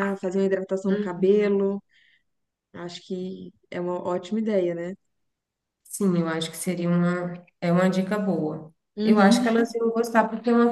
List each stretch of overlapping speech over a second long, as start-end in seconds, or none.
none